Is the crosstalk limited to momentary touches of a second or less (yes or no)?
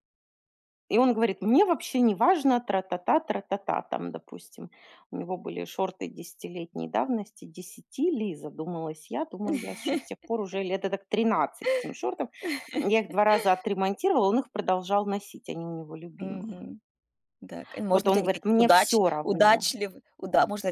no